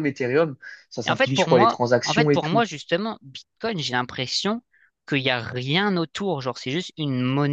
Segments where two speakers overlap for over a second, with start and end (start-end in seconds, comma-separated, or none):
1.1-2.6